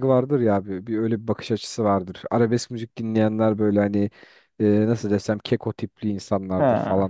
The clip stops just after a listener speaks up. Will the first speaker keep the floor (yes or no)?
yes